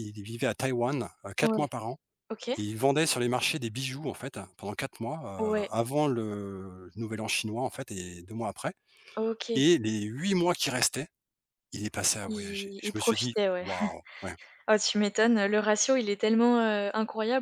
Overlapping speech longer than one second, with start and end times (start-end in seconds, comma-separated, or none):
12.2-13.7